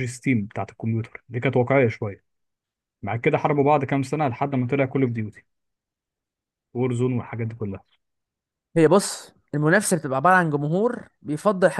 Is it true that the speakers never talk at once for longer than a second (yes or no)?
yes